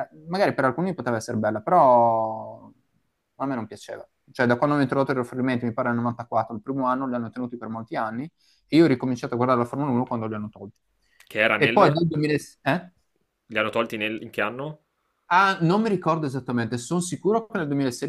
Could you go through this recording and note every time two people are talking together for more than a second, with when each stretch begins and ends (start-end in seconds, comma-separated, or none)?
none